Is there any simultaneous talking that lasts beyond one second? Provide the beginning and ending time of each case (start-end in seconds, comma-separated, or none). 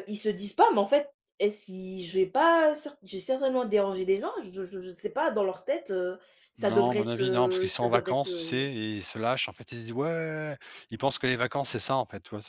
6.6-8.7